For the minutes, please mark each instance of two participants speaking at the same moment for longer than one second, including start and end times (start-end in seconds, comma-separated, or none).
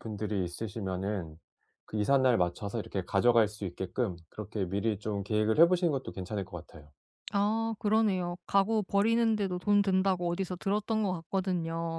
none